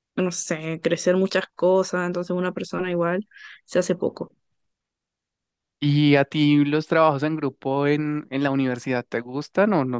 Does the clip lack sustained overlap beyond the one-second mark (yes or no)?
yes